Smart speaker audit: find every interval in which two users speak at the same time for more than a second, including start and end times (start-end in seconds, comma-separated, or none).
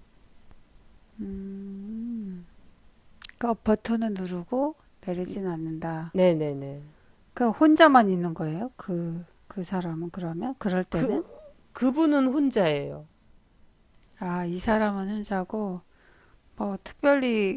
none